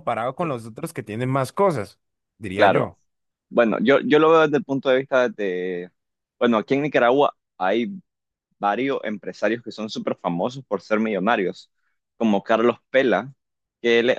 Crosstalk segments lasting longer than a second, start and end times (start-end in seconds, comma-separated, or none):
none